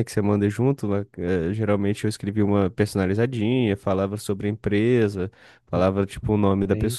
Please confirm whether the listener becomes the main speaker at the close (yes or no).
no